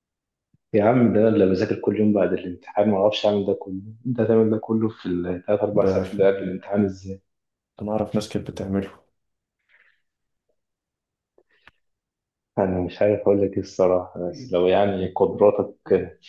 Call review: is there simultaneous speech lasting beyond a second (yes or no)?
no